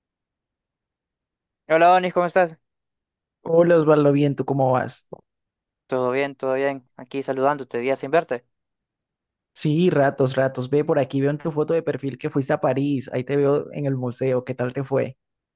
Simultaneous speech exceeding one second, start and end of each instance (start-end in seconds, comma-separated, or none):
none